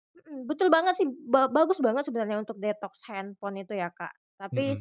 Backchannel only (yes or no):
yes